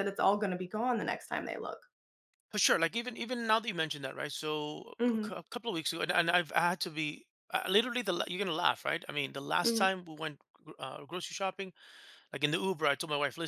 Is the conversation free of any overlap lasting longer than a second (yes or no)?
yes